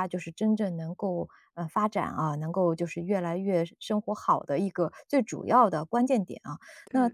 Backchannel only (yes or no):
yes